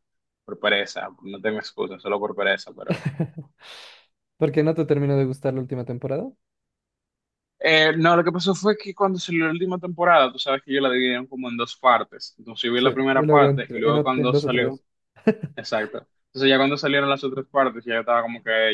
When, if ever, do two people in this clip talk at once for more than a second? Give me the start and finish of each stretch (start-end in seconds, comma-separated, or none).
12.8-14.8